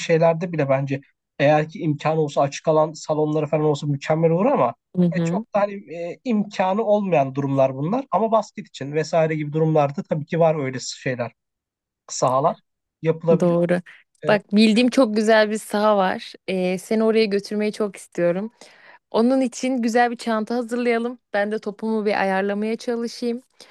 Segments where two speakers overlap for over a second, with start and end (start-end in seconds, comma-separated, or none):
none